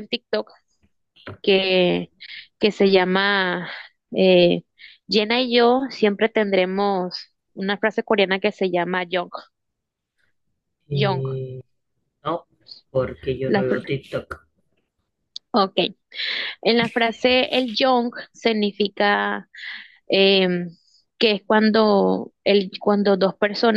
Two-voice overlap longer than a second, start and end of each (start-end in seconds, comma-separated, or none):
none